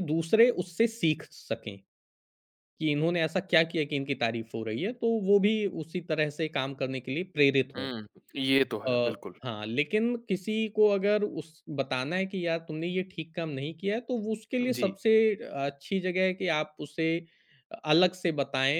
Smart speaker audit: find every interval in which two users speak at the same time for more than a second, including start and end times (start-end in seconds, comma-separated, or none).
none